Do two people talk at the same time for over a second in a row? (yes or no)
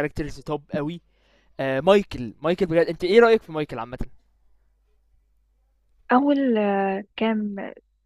no